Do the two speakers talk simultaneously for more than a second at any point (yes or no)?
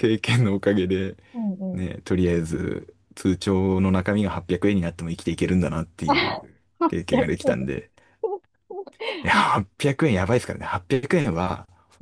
yes